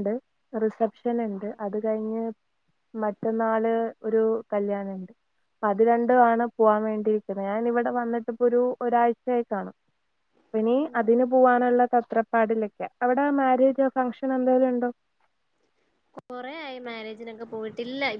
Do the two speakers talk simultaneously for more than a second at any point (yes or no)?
no